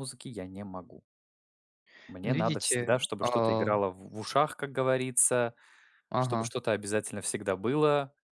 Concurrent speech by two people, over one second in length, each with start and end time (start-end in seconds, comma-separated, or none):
2.2-3.7